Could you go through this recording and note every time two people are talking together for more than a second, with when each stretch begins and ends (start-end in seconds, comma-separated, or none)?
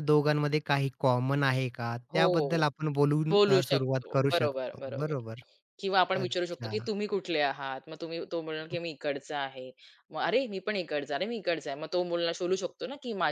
3.3-5.1